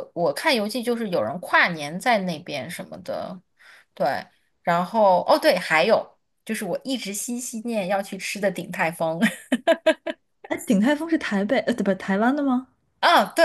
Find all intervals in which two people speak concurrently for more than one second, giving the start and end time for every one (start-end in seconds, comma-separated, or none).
none